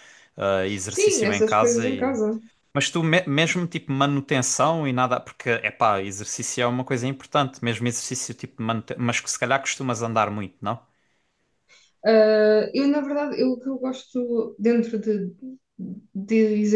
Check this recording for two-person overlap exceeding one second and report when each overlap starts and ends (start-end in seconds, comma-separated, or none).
0.9-2.2